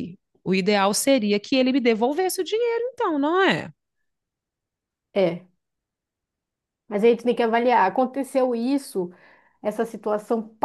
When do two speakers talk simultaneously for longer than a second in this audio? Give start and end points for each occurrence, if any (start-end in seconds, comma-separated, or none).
none